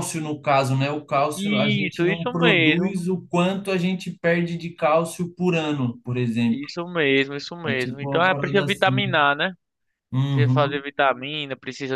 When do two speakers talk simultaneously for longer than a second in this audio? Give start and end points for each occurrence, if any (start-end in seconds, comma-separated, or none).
1.4-3.0, 7.6-9.0